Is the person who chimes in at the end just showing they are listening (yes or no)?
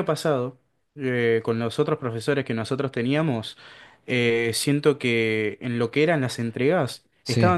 yes